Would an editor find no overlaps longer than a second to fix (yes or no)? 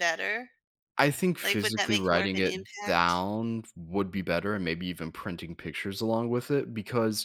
no